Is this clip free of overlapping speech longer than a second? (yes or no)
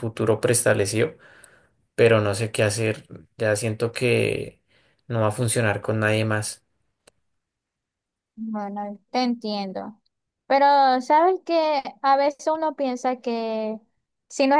yes